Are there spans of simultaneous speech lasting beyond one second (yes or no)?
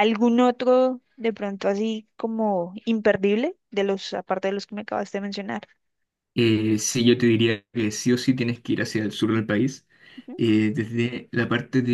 no